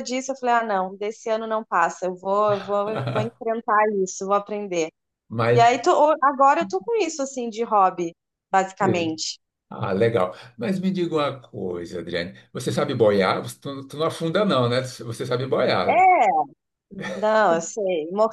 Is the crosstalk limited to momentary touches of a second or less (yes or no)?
yes